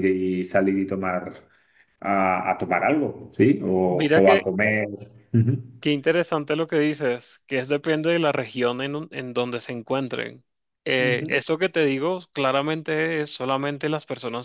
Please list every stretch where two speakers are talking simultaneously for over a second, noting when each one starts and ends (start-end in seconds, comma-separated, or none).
none